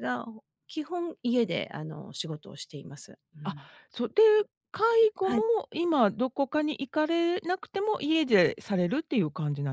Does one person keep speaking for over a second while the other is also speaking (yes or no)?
no